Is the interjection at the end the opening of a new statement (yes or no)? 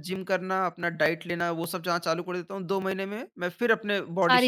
yes